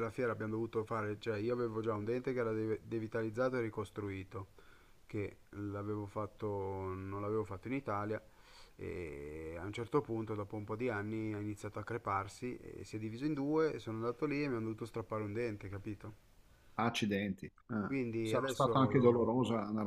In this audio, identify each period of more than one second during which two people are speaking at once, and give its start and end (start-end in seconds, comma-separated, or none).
17.8-19.3